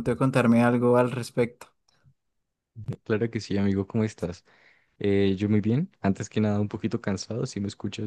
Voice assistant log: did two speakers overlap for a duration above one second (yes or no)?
no